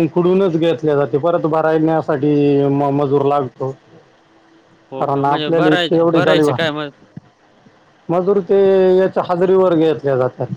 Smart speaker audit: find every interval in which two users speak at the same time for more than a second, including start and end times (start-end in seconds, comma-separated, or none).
5.0-6.6